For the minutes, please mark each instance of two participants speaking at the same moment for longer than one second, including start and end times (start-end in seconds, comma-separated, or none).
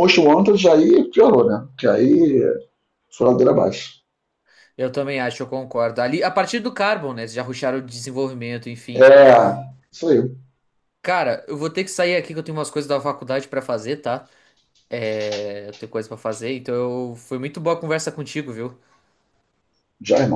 none